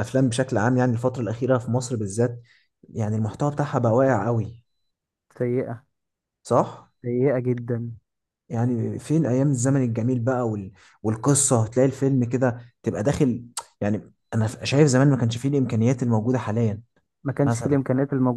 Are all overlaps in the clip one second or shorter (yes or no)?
yes